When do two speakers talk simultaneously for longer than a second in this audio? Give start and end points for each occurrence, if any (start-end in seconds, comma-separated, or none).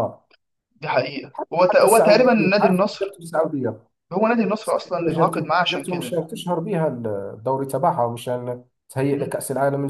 1.7-3.2, 4.6-6.2